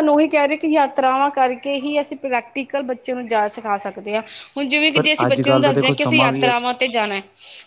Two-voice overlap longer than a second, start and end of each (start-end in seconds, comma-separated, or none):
4.9-6.5